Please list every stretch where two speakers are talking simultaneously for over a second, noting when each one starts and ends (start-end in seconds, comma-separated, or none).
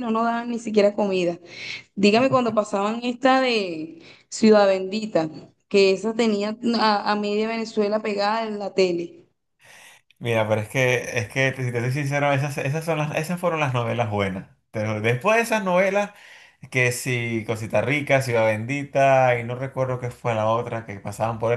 none